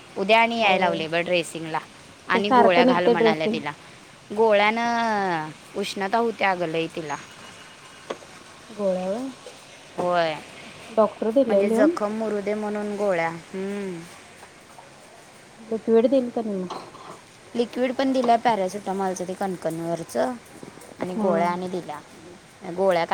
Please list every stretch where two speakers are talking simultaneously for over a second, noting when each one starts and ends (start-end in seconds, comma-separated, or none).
2.4-3.6